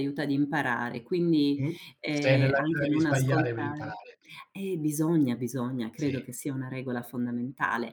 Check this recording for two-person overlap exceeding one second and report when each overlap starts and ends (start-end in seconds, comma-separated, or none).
1.6-4.0